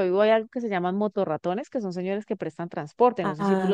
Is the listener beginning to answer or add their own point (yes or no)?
yes